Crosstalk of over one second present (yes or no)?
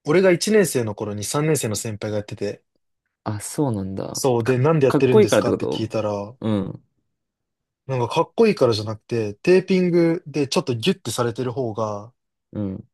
yes